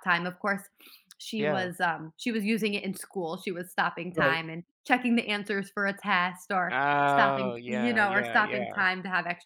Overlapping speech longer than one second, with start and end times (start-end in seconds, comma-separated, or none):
6.7-8.8